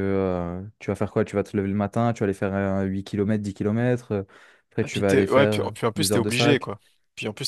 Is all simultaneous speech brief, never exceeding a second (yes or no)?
no